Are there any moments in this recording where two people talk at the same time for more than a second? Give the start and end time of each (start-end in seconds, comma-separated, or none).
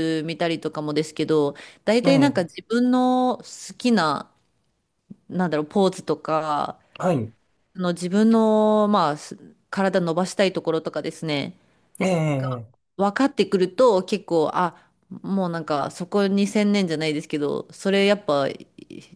none